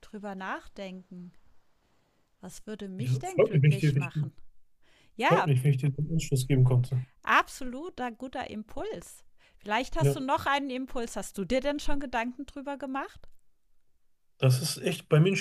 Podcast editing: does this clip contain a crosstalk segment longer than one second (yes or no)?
yes